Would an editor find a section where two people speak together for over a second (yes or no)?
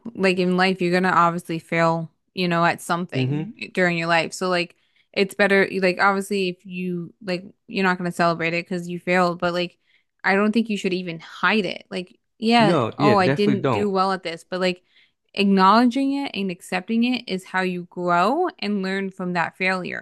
yes